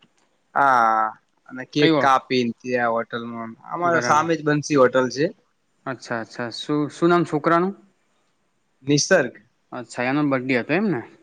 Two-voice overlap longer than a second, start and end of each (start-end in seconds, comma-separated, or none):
none